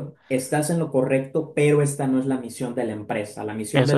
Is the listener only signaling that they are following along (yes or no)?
yes